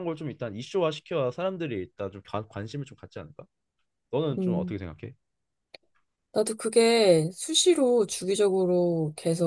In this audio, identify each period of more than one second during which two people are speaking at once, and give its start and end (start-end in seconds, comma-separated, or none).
none